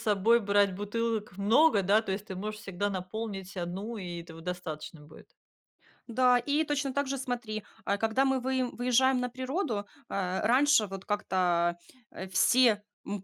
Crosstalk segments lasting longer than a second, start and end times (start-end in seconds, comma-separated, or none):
none